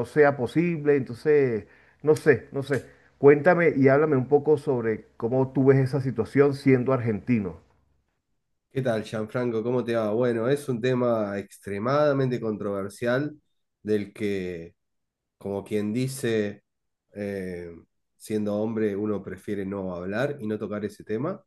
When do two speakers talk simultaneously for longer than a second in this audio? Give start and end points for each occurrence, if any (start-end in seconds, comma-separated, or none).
none